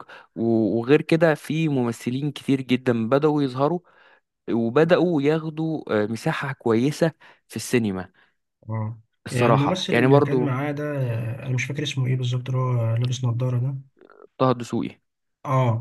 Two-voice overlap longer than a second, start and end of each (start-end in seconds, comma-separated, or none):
9.3-10.6